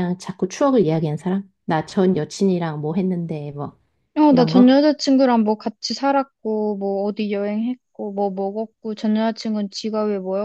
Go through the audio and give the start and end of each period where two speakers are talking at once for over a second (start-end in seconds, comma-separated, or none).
none